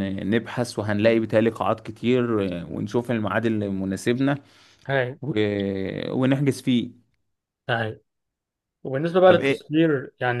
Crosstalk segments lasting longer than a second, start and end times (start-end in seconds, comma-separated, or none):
none